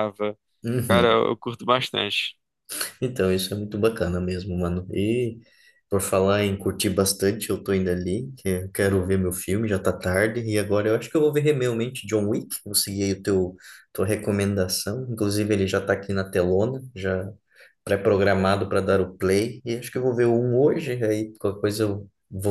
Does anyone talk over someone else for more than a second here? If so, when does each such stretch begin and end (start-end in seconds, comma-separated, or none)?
none